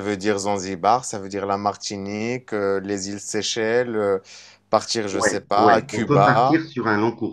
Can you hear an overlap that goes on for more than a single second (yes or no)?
yes